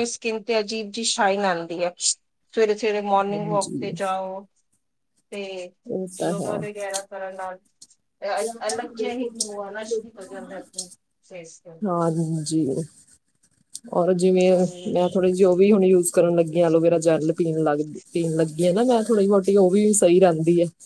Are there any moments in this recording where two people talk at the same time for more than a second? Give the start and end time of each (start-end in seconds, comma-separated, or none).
none